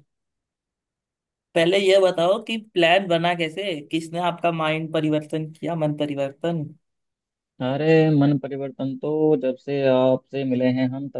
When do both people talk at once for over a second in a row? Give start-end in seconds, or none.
none